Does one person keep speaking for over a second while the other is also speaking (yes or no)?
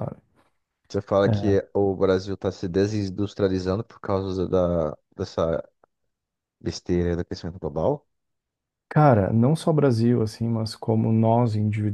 no